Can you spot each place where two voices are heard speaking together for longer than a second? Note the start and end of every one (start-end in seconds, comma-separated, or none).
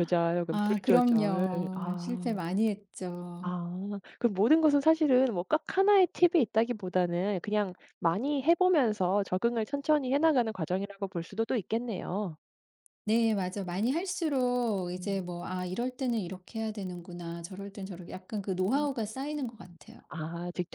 0.5-2.4